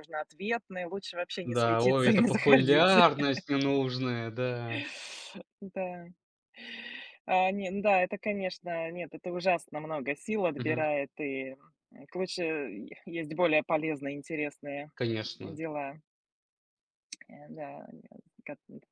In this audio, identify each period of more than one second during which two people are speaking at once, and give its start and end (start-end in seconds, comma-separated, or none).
1.4-3.0